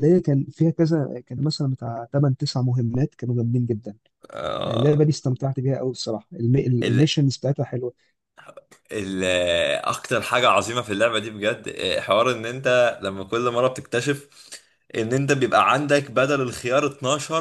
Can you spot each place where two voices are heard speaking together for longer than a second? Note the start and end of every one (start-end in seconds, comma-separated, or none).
none